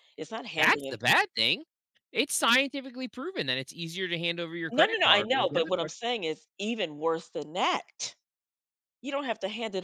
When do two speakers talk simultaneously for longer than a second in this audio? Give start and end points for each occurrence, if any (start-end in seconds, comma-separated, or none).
4.7-5.9